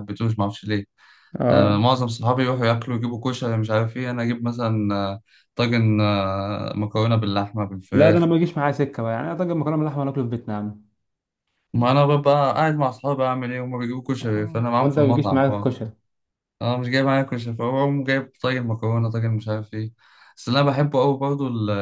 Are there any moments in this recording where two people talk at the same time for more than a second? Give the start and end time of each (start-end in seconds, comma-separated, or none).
14.2-15.7